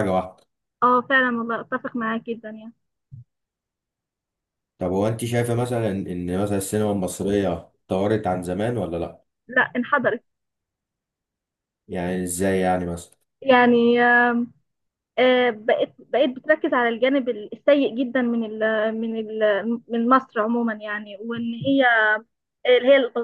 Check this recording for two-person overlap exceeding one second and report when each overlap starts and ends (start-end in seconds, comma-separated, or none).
none